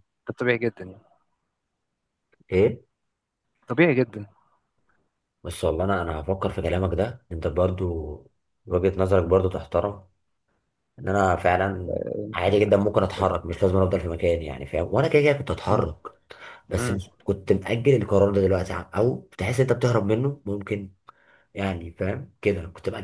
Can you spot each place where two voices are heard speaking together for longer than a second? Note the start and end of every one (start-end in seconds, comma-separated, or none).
none